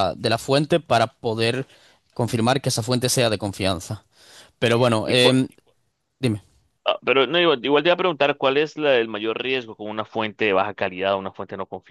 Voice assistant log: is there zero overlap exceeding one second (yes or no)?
yes